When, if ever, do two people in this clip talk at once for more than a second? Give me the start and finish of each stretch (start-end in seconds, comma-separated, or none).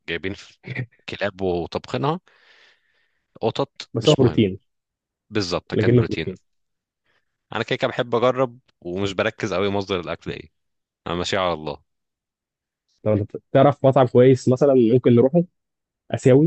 none